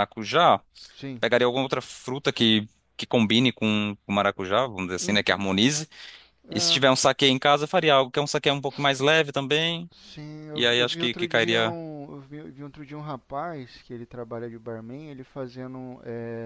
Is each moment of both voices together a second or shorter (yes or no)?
no